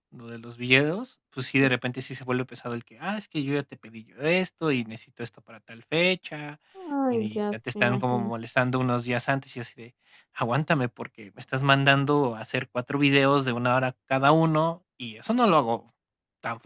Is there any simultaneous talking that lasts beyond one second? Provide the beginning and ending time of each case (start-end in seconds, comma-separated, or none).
7.1-8.3